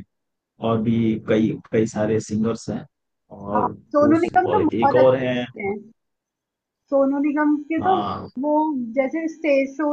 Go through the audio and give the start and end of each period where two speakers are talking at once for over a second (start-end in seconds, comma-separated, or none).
3.5-5.5